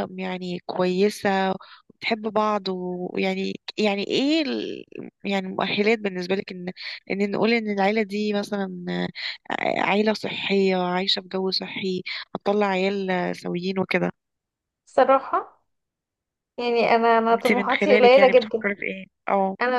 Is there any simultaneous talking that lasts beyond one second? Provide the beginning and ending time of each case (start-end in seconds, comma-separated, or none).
17.3-18.6